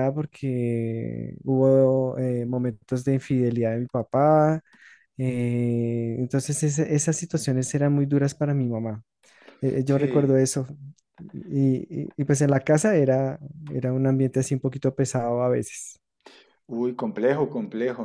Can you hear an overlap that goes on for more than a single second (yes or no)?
no